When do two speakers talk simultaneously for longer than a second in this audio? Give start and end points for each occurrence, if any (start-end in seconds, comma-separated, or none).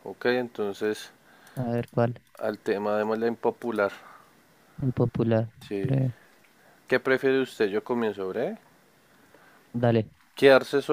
none